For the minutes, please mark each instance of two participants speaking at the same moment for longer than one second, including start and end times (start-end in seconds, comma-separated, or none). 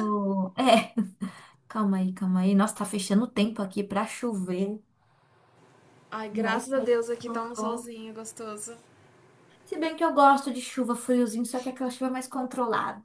6.3-7.9